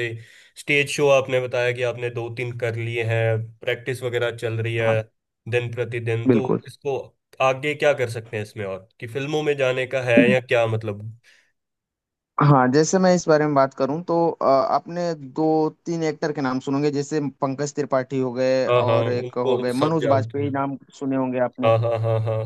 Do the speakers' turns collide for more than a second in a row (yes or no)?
yes